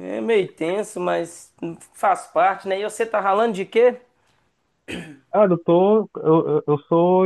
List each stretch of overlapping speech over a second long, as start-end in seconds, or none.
none